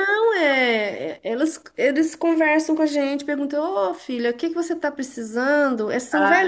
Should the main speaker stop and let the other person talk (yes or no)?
no